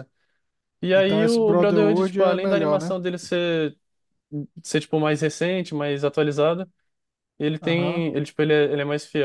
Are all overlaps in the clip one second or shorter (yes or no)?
no